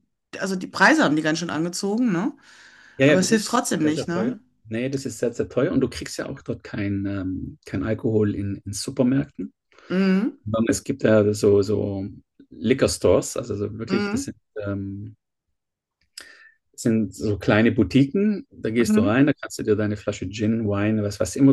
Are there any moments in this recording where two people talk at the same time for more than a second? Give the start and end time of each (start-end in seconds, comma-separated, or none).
3.0-4.3